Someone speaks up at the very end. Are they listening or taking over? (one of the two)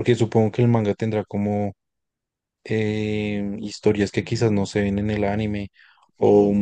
listening